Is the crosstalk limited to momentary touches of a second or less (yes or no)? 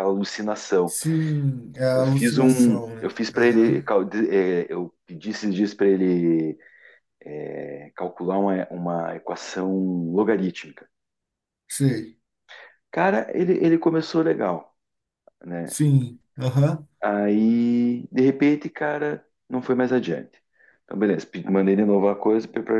no